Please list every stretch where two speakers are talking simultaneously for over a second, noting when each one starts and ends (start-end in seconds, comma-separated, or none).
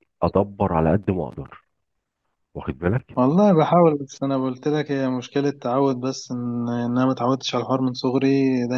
none